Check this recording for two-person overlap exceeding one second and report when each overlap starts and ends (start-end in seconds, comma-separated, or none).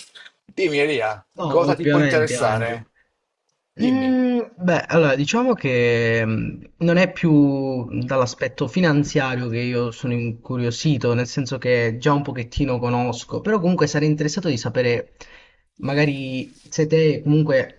1.4-2.8